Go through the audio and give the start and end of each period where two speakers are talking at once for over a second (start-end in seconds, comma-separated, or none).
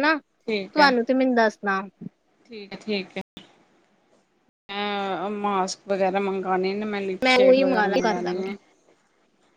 7.2-8.5